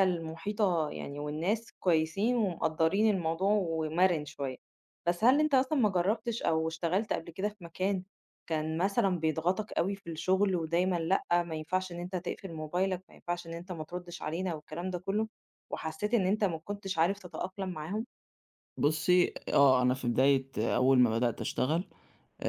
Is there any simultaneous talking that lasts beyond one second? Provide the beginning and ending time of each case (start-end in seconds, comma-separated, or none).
none